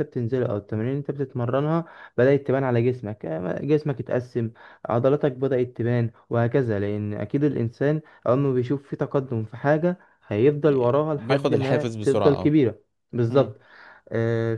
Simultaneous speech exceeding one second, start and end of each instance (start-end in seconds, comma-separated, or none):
10.7-12.6